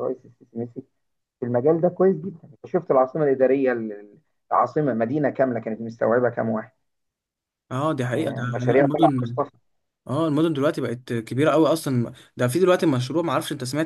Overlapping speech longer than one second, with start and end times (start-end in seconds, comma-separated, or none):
8.1-9.4